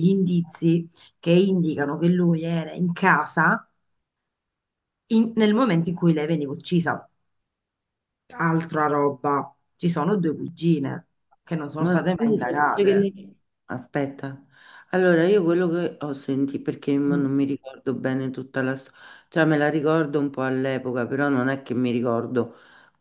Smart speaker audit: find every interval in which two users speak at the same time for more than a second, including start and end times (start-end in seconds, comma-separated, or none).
11.8-13.1